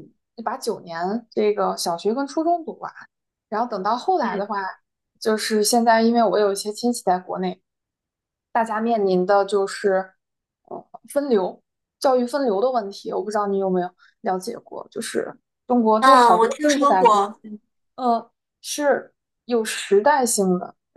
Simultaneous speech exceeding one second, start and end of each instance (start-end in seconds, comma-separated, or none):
16.0-17.3